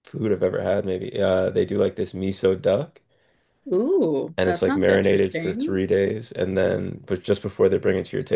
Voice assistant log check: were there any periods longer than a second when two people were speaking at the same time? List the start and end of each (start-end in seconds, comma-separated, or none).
4.4-5.8